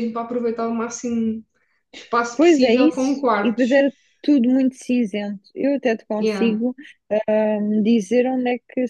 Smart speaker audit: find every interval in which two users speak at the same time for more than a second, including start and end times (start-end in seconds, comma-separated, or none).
2.4-3.8